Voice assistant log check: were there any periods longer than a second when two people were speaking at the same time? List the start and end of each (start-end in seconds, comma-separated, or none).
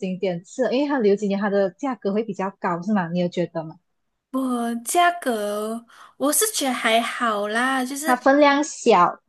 none